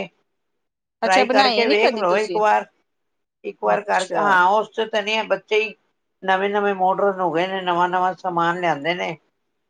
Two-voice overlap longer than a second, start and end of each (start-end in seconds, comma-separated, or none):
1.0-2.4